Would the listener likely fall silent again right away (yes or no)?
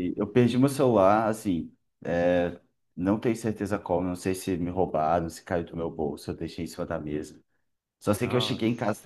yes